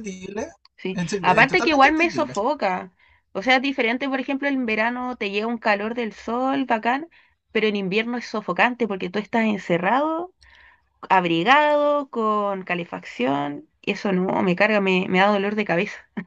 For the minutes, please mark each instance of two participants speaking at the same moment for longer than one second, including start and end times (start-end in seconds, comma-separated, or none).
0.9-2.3